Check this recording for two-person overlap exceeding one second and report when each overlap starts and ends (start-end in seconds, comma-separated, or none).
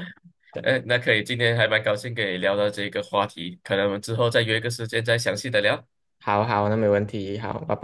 none